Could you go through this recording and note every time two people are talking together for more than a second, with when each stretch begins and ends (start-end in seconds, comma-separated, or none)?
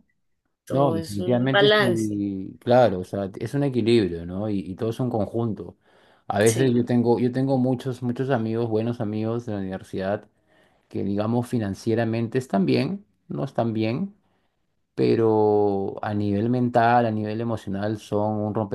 0.7-2.2